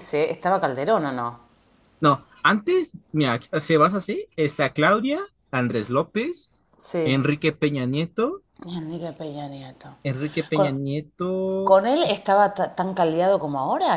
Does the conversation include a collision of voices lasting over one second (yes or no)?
no